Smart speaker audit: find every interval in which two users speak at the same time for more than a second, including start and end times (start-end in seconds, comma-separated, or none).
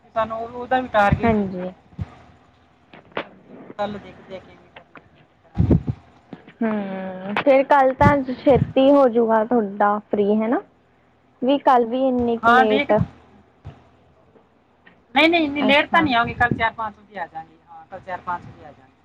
none